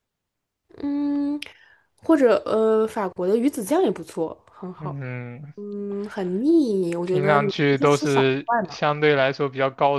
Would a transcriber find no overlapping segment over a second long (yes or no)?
no